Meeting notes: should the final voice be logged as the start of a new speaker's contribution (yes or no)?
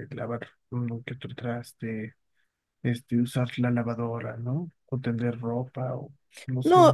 yes